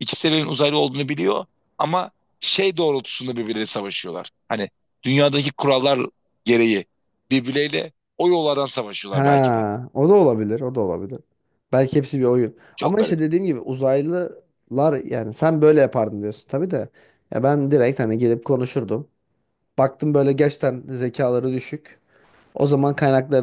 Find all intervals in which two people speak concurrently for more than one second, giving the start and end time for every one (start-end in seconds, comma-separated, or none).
none